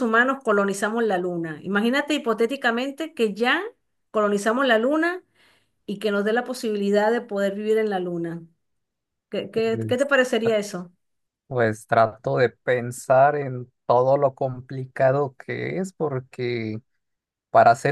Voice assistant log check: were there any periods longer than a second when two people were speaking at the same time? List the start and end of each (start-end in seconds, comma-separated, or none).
none